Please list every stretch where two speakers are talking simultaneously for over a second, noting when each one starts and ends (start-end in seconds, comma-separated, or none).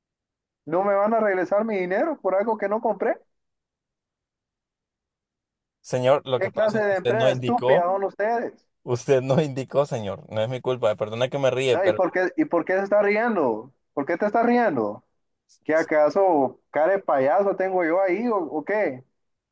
6.3-7.9